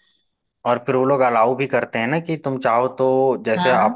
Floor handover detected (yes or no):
no